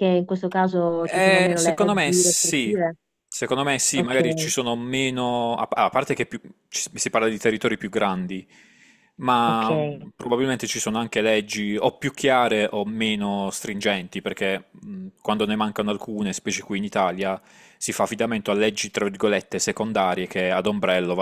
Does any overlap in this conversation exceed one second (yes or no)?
yes